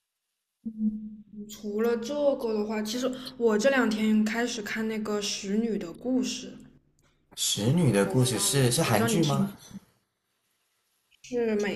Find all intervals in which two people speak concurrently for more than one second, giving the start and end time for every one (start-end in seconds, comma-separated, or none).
8.0-9.5